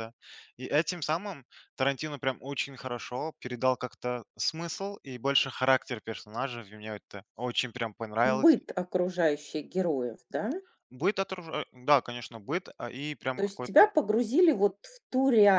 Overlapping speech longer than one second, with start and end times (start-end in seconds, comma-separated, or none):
none